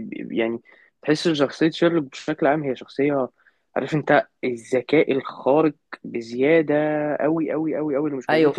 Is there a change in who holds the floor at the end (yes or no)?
yes